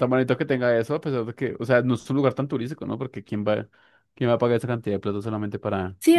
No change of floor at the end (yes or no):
no